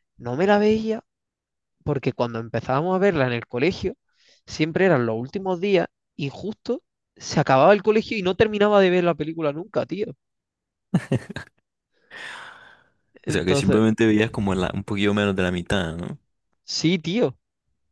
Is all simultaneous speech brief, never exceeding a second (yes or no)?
yes